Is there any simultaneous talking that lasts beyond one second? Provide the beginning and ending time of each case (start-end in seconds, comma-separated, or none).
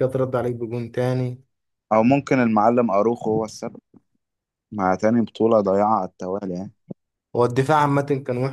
none